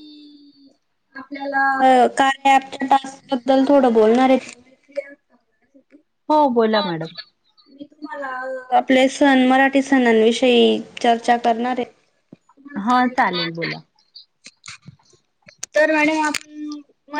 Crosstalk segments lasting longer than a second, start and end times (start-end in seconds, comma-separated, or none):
none